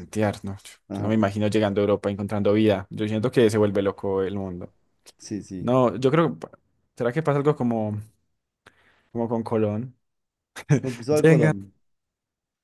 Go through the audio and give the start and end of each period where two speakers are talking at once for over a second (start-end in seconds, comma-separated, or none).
none